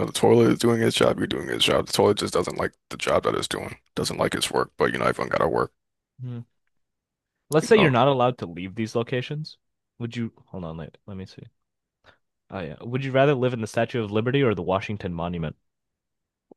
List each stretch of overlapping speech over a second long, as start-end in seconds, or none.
none